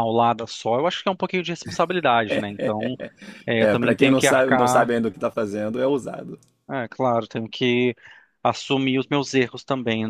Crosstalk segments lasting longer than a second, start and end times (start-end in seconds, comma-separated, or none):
3.6-4.9